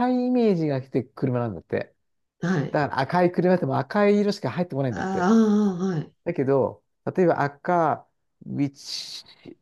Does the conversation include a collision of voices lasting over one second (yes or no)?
no